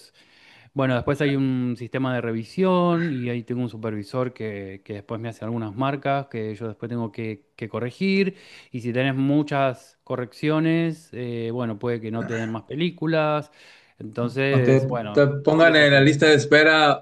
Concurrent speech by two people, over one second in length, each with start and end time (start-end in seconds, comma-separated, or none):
14.2-16.1